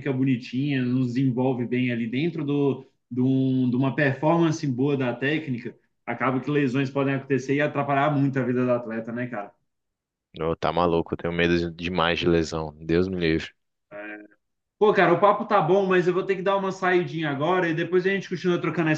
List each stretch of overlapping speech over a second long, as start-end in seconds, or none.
none